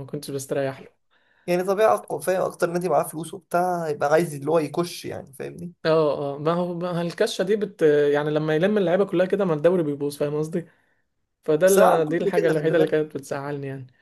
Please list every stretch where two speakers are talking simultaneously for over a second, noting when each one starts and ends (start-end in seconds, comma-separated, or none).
11.7-13.1